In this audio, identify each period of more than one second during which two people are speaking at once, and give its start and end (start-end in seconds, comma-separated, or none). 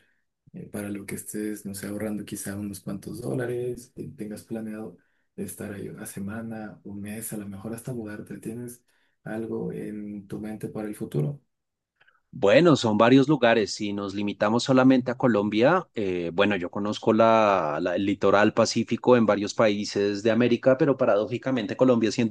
none